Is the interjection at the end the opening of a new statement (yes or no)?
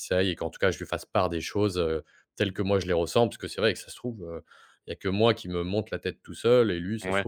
no